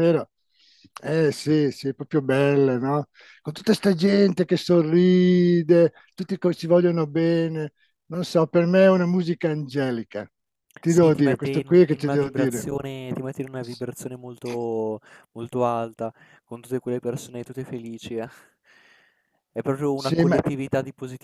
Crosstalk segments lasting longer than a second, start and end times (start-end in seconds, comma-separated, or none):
10.8-12.7